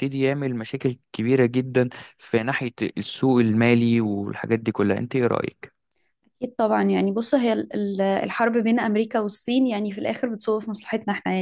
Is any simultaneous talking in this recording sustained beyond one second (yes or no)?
no